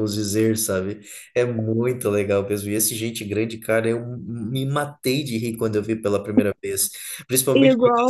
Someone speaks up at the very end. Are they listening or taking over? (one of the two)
listening